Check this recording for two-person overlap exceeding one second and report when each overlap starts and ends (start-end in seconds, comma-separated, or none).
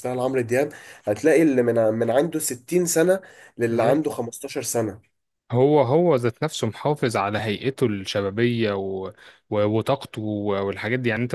none